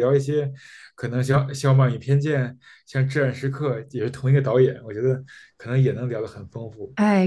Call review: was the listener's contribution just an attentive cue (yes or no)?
no